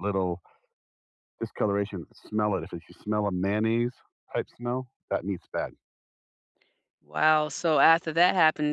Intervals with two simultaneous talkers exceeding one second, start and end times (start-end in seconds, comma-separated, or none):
none